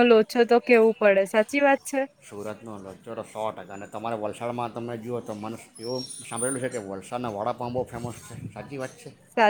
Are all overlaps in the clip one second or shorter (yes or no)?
yes